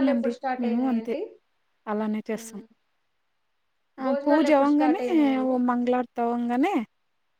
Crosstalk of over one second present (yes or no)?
yes